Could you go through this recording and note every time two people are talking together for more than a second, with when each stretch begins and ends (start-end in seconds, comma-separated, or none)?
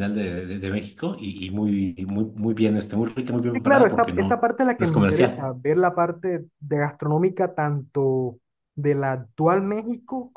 3.5-5.5